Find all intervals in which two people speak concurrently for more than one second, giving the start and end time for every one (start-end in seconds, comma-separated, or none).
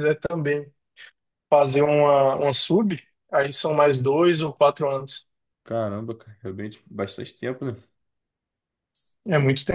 none